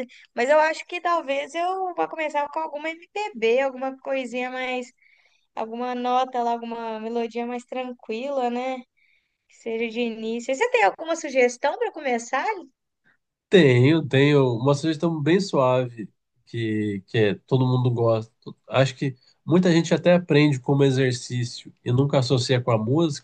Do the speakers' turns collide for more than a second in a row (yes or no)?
no